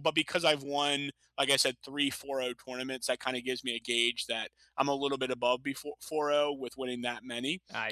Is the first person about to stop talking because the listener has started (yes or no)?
no